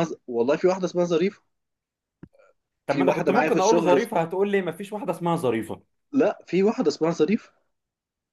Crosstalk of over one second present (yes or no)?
yes